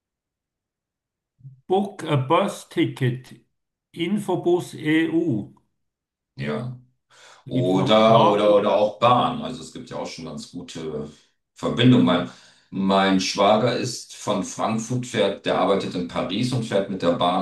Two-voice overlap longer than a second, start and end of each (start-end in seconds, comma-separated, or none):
7.5-8.7